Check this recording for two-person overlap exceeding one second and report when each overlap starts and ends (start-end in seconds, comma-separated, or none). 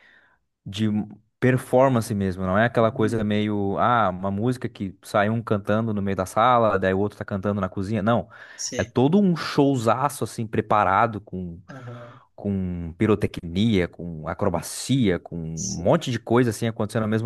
none